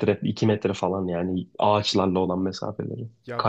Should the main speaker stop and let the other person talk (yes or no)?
yes